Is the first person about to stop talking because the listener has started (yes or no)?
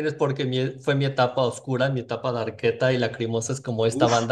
no